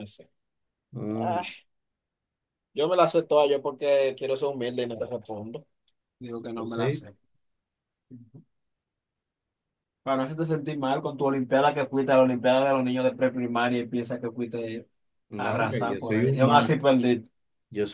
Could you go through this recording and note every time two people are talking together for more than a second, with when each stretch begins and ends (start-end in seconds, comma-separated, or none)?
15.4-16.7